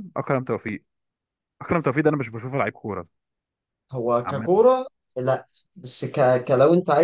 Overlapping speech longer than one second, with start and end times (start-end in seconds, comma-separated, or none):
none